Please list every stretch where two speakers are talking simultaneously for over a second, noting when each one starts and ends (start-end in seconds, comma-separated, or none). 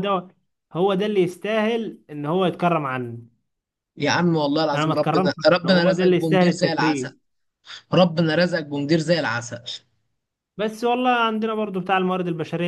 4.7-7.1